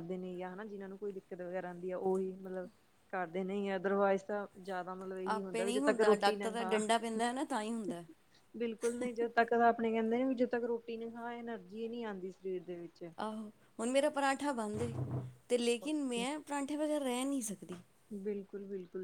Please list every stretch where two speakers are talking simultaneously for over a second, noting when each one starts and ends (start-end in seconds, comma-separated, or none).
5.3-6.8